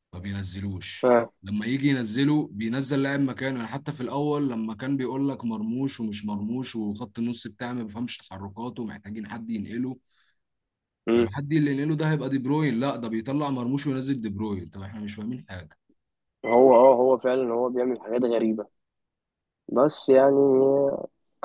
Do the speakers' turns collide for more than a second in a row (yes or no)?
no